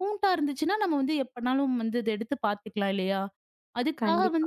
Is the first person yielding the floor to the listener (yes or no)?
no